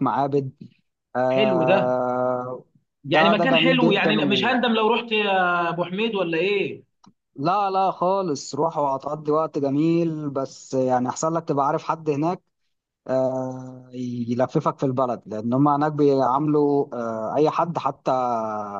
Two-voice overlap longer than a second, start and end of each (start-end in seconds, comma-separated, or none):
3.1-4.6